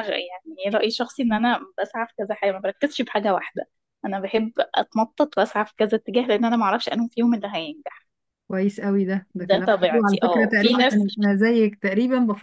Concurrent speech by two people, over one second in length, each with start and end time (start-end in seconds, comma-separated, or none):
9.4-11.0